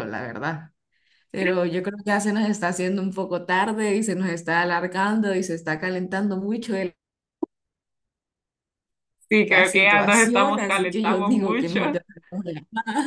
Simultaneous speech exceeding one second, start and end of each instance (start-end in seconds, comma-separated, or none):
9.5-12.0